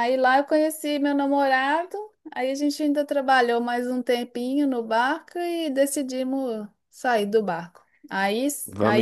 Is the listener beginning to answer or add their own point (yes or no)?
no